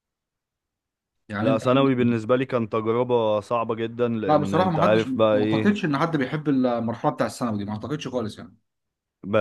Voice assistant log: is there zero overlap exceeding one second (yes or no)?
no